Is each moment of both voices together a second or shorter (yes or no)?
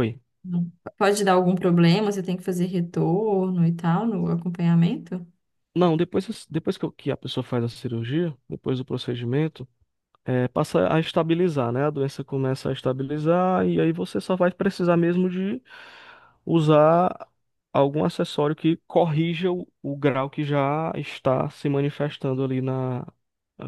yes